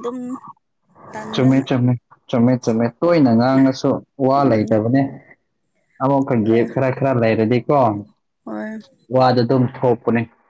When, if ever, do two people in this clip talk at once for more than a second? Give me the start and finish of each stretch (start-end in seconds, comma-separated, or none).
none